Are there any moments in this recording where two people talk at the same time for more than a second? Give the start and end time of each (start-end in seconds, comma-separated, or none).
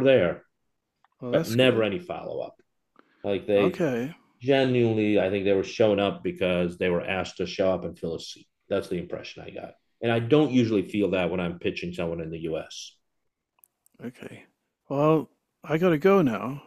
none